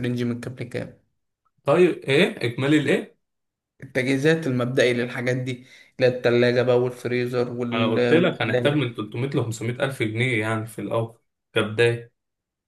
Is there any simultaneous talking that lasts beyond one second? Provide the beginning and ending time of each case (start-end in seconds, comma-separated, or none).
7.7-8.9